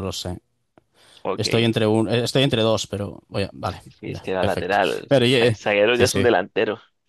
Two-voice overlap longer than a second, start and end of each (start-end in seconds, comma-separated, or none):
4.0-6.2